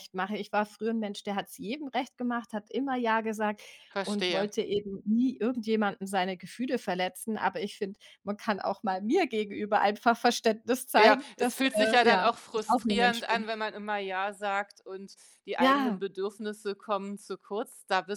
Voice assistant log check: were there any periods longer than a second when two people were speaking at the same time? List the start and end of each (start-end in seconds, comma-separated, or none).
11.0-13.5